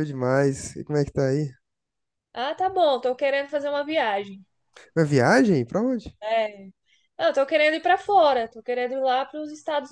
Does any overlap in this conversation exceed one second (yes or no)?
no